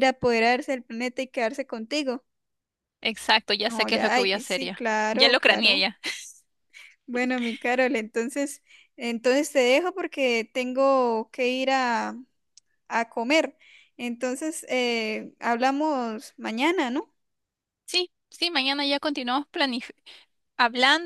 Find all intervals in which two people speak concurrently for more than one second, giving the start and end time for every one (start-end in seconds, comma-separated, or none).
3.7-5.8